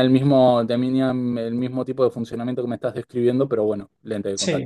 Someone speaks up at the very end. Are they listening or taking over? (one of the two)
taking over